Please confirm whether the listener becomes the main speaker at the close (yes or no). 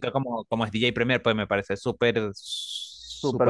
yes